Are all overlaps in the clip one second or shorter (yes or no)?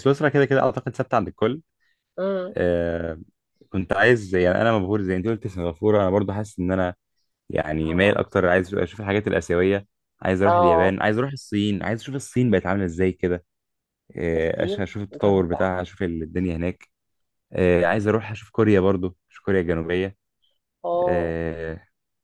no